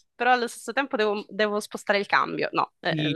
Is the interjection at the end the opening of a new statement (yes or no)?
yes